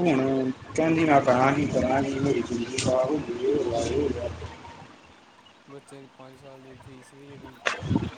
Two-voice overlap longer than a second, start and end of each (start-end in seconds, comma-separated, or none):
none